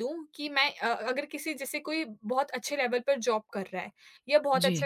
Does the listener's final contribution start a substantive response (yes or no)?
no